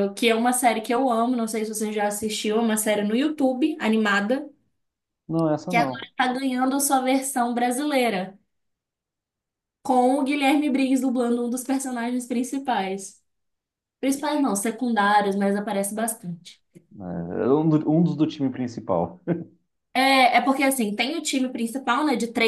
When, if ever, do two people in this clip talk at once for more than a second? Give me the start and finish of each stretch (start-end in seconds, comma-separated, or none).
none